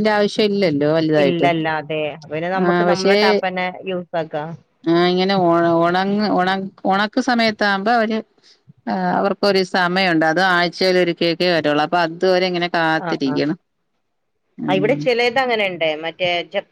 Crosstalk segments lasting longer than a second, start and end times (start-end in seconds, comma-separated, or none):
none